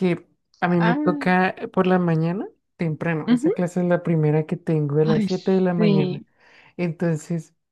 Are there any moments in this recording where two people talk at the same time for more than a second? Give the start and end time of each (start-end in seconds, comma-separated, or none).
5.0-6.2